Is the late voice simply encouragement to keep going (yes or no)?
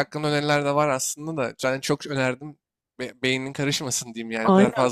no